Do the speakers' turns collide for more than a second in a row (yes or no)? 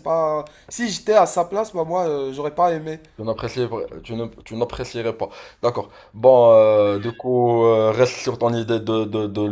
no